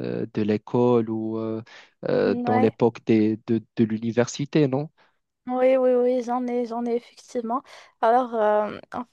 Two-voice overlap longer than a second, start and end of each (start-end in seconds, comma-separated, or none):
none